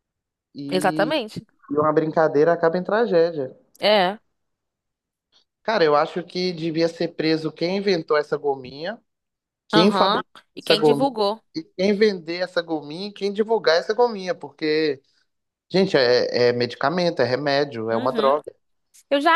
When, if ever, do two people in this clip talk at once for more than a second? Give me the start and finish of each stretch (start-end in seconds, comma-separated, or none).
9.7-11.2